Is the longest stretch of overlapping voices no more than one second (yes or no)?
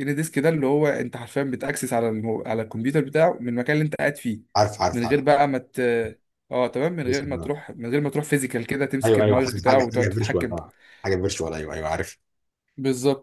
no